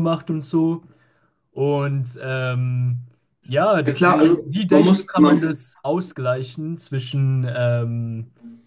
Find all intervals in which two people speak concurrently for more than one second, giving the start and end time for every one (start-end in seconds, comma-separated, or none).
3.9-5.5